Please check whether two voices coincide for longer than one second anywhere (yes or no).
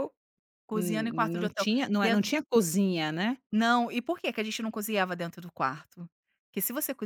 yes